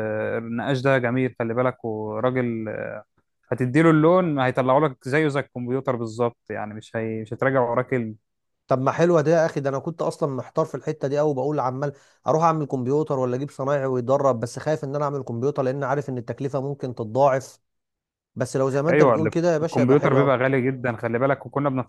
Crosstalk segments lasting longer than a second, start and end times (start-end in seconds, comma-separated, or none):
18.9-20.4